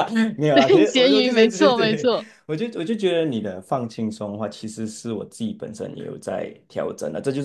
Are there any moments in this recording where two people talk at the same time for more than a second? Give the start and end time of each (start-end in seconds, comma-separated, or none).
0.5-2.1